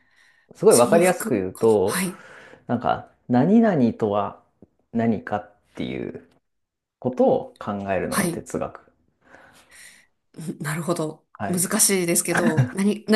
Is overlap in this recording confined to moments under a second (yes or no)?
no